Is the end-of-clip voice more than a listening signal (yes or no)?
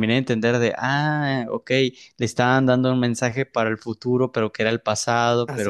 no